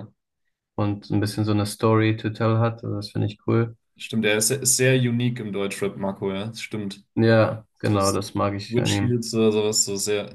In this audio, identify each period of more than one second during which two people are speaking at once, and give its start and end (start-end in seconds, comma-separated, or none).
7.8-9.2